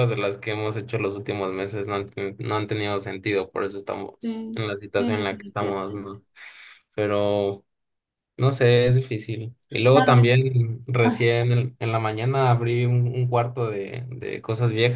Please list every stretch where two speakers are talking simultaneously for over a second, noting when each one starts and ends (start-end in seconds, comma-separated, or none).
4.2-6.2